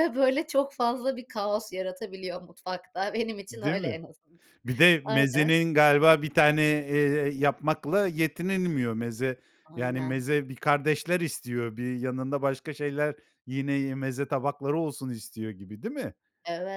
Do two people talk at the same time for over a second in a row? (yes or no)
no